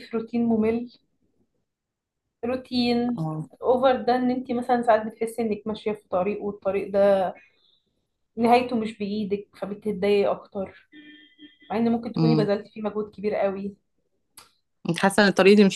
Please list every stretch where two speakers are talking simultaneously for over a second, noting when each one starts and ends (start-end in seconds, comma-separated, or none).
none